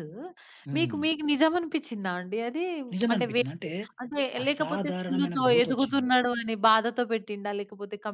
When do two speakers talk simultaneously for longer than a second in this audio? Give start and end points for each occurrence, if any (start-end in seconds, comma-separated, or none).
4.4-6.1